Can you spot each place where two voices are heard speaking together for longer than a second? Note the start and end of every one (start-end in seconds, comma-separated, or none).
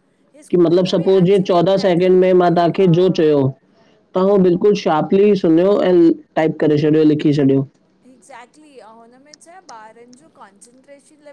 0.5-2.9